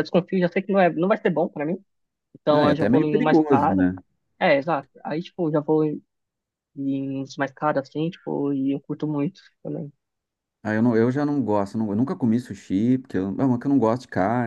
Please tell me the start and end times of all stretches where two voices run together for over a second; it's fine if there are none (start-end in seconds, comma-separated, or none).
2.5-3.9